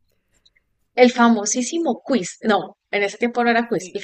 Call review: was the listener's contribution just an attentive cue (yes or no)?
yes